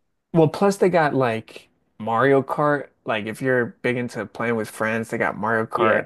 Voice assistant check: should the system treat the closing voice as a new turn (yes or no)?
yes